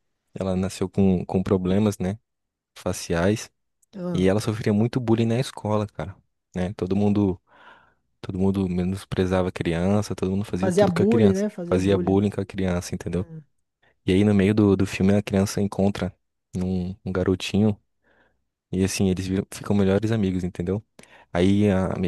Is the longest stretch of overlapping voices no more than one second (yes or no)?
no